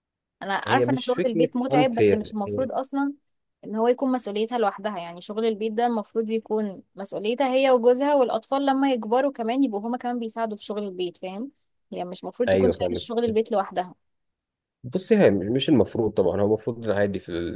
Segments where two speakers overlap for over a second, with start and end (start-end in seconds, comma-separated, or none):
0.7-2.7